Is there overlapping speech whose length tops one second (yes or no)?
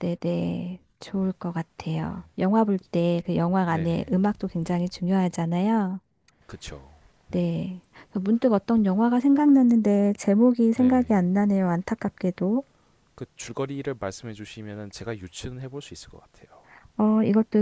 no